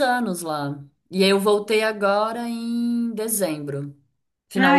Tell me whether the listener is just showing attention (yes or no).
no